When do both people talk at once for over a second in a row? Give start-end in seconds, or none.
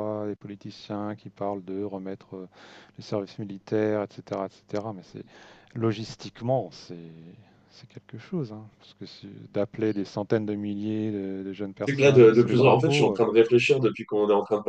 11.8-13.2